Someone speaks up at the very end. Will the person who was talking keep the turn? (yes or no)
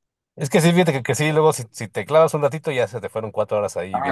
no